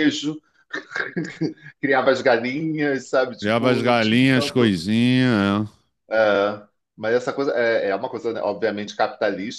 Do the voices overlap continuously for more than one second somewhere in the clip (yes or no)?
yes